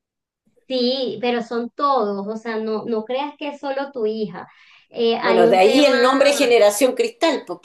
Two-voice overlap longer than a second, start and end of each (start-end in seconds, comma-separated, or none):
5.2-6.6